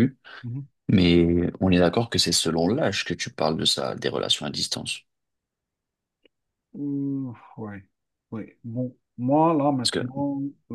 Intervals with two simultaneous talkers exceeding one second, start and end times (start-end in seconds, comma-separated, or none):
none